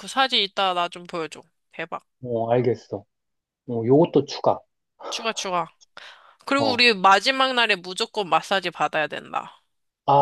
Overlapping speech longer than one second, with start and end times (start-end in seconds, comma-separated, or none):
none